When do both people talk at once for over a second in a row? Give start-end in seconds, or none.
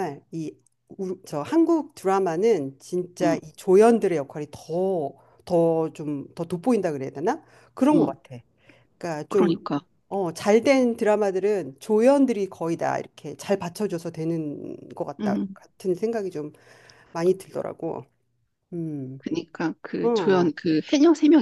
none